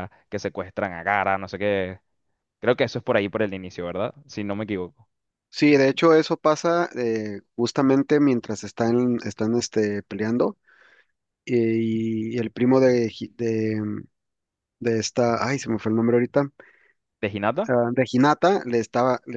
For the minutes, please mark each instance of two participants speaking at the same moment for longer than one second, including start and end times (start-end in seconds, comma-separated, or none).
none